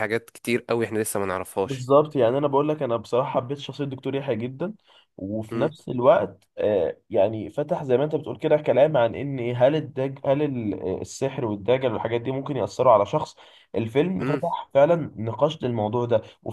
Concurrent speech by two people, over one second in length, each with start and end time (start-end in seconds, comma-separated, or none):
none